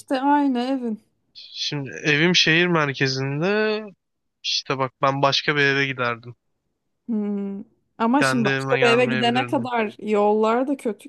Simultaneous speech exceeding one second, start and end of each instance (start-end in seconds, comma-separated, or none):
8.2-9.7